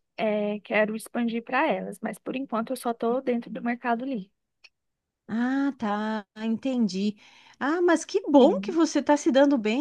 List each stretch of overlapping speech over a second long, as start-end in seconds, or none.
none